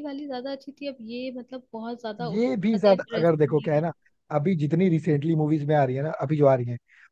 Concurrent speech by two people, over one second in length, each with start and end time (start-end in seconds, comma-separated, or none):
2.2-3.8